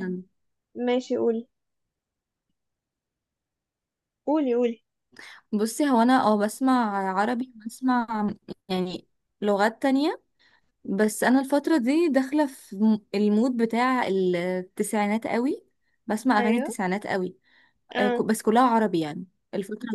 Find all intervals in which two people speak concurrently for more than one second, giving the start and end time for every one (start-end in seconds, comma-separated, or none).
none